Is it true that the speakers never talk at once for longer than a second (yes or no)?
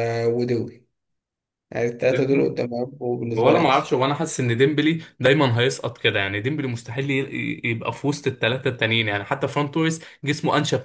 yes